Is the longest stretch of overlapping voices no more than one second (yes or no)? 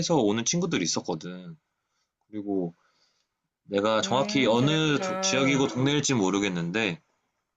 no